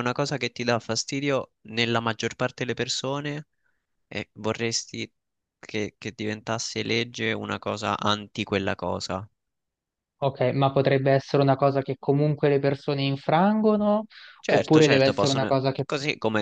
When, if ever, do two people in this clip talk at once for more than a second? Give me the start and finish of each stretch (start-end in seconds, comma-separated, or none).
14.5-15.8